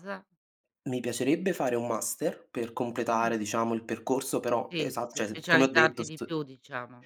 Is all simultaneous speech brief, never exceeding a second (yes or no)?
no